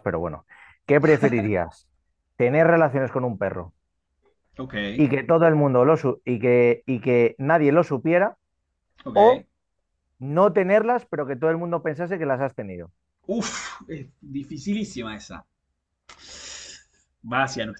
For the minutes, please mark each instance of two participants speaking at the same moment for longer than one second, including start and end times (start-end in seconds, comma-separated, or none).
none